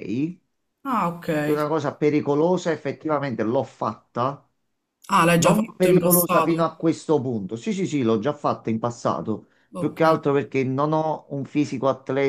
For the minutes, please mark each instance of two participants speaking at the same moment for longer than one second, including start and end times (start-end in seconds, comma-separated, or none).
5.4-6.8